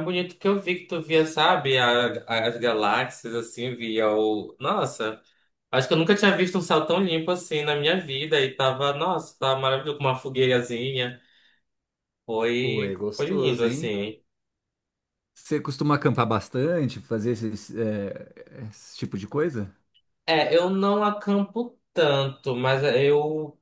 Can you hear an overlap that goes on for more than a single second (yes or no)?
yes